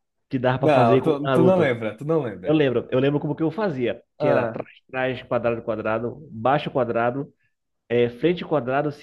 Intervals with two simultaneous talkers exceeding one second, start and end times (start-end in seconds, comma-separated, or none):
0.5-1.7